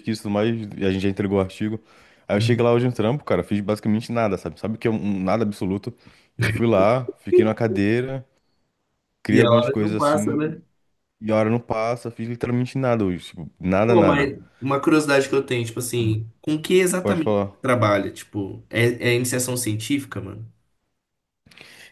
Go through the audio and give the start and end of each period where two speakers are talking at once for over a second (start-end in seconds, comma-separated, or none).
9.3-10.6